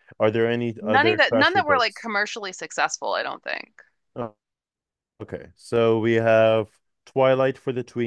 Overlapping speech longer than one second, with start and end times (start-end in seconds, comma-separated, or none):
0.8-2.1